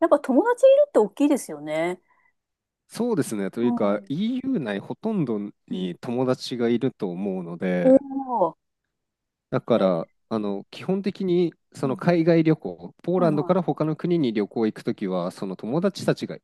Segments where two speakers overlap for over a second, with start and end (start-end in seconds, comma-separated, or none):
none